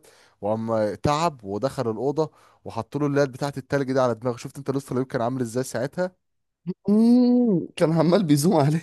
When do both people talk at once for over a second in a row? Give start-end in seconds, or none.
none